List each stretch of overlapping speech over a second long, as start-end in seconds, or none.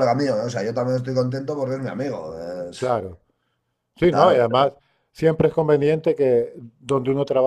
none